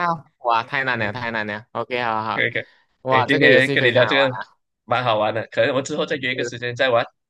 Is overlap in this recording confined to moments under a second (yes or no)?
no